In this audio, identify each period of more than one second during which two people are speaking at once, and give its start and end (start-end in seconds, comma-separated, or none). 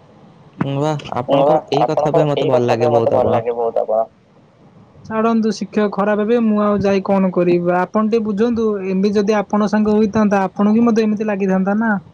1.4-3.4